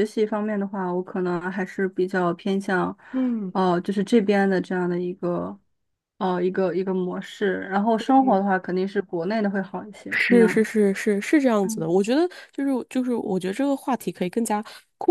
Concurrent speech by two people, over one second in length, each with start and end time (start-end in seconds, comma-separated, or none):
none